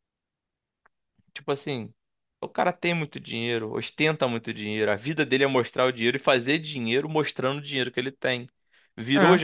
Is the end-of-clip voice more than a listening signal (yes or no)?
no